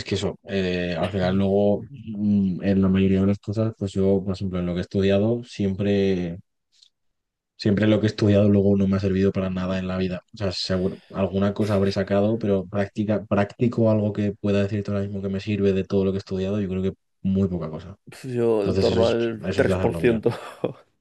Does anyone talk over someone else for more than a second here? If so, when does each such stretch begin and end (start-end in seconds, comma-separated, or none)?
18.6-20.2